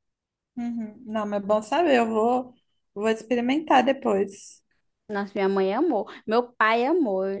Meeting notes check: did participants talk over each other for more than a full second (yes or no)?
no